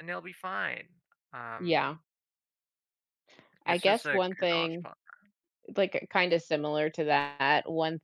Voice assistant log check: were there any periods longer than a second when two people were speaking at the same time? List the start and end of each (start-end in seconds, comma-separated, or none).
3.7-4.9